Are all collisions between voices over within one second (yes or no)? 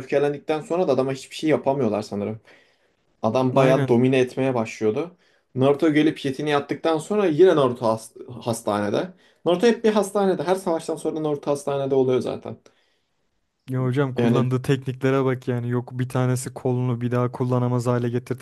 yes